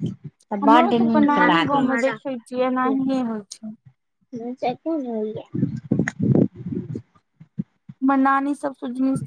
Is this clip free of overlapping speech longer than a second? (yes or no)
no